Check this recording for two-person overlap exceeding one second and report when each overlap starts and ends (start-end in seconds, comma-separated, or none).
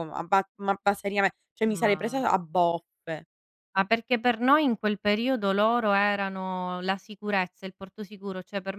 none